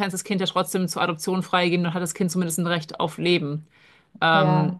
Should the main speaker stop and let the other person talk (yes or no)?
no